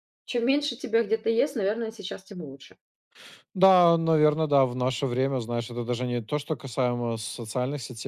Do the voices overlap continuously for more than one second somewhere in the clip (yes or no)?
no